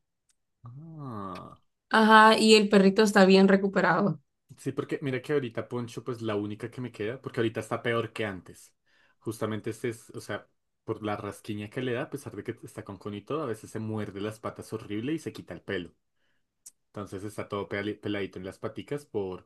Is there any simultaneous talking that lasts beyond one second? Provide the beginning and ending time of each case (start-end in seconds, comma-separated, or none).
none